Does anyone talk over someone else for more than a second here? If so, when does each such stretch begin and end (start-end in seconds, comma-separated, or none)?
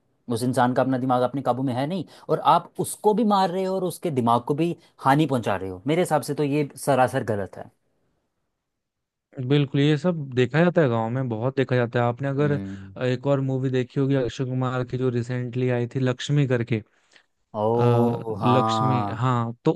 17.8-19.2